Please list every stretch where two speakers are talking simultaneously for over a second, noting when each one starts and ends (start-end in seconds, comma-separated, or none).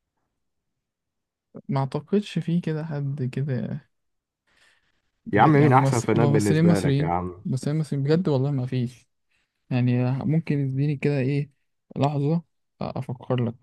5.3-7.5